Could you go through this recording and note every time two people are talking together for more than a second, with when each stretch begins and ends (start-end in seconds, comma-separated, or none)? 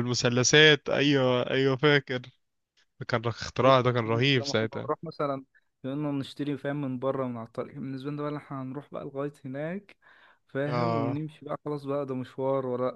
3.6-4.9